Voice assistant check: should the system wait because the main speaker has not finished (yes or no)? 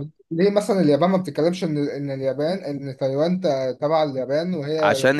no